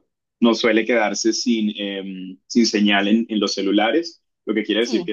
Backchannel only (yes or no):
yes